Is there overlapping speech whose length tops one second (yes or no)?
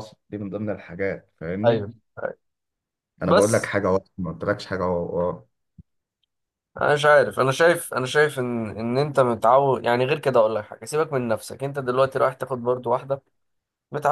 no